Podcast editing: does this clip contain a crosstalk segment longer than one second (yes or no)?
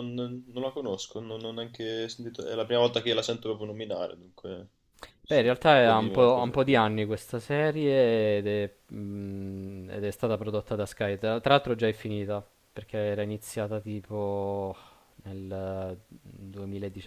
yes